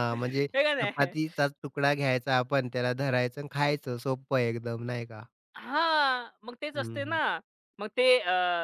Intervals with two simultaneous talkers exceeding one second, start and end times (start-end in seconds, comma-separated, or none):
none